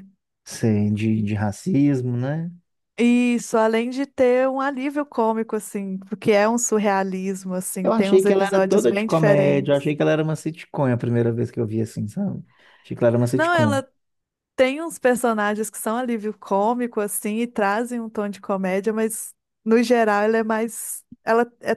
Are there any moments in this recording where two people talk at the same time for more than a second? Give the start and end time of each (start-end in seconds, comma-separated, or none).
7.8-9.9